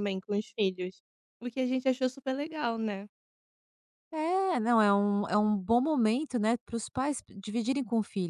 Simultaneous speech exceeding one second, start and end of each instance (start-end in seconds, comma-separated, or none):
none